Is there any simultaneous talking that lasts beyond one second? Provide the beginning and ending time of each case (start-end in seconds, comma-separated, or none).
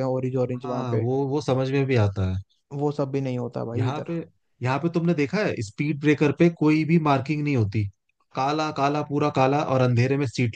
none